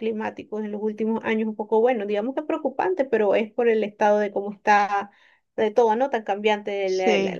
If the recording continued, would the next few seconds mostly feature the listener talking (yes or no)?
no